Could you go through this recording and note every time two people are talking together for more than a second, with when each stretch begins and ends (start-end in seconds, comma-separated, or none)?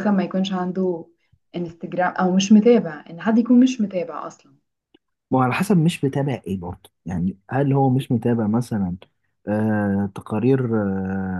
none